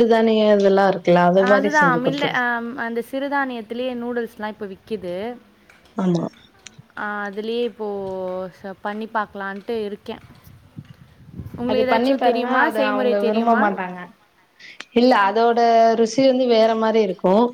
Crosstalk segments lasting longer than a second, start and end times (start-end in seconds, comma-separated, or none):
11.7-13.6